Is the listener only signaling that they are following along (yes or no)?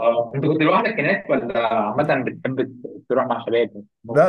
no